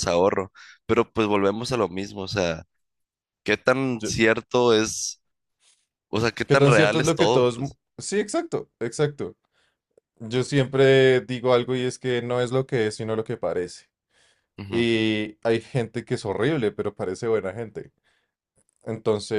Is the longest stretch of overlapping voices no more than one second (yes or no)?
no